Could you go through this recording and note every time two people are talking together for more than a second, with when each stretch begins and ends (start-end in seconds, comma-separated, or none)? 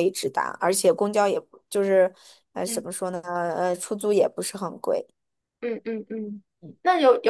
none